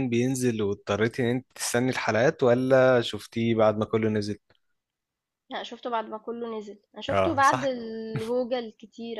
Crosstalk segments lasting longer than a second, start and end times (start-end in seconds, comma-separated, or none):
none